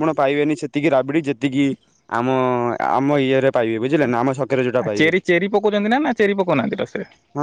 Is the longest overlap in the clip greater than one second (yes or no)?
no